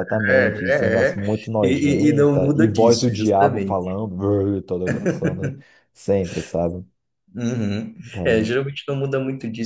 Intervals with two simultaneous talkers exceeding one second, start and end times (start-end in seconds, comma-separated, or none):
1.6-4.0